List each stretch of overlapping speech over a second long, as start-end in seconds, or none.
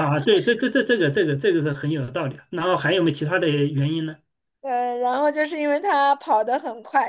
none